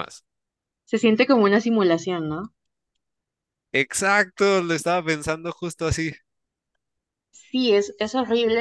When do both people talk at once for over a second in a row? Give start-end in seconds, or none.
none